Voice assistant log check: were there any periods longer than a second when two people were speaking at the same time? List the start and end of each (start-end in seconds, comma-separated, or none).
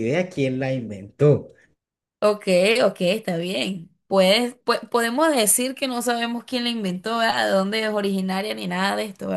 none